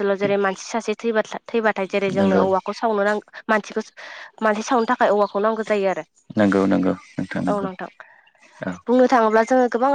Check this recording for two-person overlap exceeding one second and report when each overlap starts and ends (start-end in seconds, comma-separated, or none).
none